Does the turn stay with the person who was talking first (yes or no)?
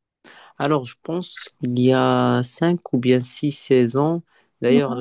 yes